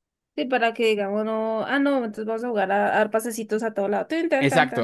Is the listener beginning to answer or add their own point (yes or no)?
yes